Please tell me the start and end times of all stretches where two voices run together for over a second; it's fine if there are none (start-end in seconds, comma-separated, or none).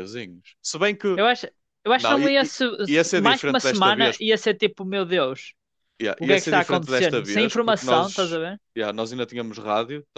1.9-4.2, 6.2-8.4